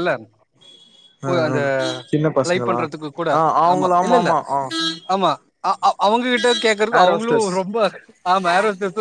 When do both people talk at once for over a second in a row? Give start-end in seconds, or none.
none